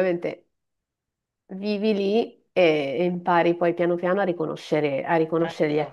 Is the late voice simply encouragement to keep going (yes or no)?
yes